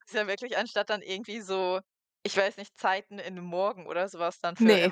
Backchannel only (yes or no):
no